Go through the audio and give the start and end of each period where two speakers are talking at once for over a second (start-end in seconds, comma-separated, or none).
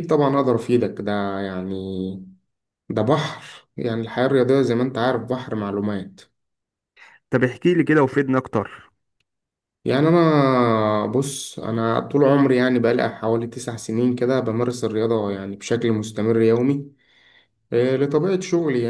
none